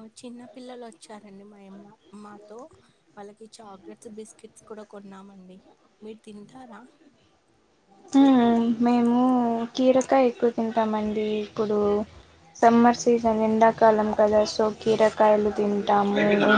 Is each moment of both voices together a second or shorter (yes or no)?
yes